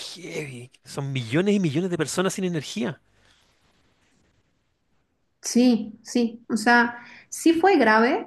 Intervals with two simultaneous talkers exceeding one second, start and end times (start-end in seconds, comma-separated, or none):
none